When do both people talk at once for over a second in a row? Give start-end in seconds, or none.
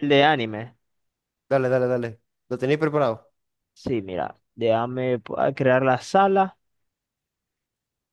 none